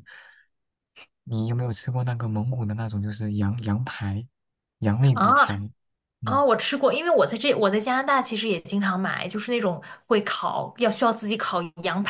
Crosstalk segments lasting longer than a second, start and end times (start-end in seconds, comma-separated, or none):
none